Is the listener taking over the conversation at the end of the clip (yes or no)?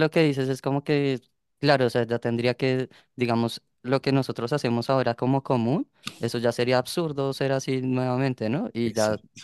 no